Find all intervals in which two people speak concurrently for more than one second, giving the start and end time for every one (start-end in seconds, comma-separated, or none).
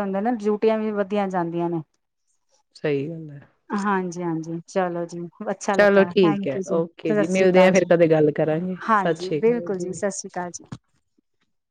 5.8-7.9